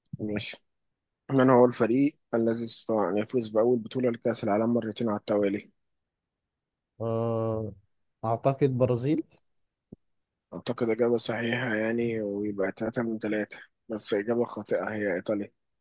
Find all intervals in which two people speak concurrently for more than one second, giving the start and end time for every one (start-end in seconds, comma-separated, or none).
none